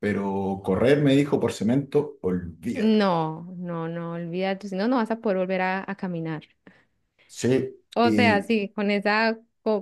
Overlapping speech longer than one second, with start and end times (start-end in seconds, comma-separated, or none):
none